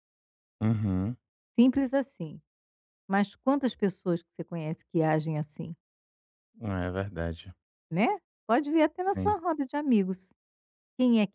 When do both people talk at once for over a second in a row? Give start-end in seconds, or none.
none